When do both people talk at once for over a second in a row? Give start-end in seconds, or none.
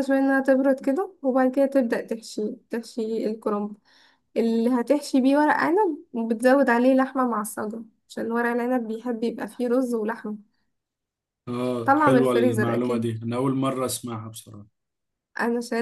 11.8-13.2